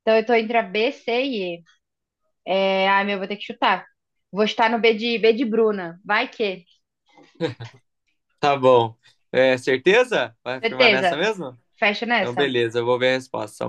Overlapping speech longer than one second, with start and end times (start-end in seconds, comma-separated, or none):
none